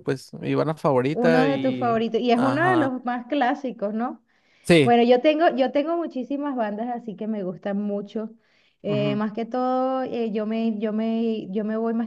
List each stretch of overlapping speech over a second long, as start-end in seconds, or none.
1.1-2.9